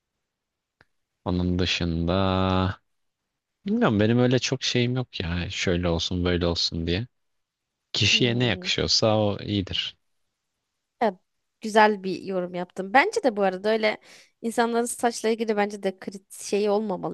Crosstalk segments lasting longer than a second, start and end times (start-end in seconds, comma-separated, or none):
none